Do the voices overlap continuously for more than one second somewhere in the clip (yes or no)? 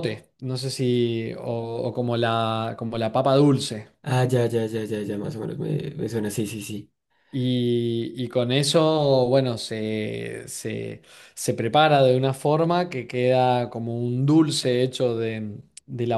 no